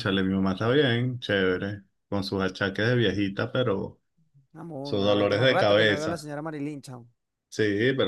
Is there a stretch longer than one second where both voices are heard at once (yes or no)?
yes